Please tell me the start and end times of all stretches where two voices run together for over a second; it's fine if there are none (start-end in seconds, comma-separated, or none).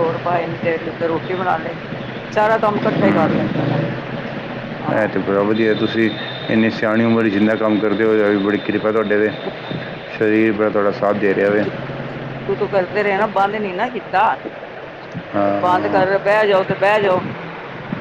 none